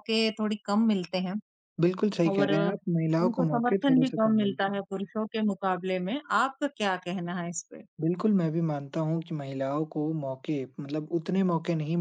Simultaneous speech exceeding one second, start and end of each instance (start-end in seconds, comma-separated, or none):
3.2-4.8